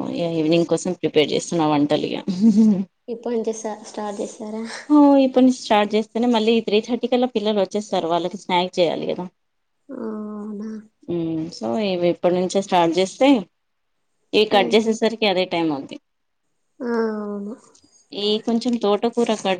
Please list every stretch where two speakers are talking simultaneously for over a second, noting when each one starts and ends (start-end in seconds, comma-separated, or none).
none